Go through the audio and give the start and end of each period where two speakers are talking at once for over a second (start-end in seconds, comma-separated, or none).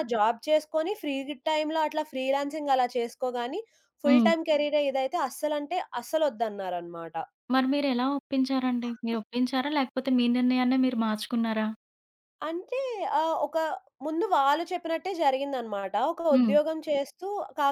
none